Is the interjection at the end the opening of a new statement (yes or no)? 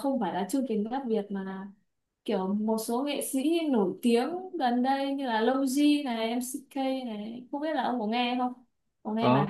yes